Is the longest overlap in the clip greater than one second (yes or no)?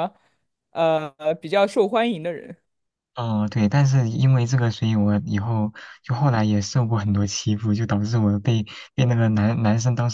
no